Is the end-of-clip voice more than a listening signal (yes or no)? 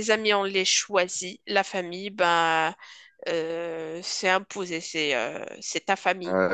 yes